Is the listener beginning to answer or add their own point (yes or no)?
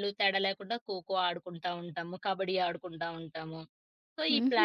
yes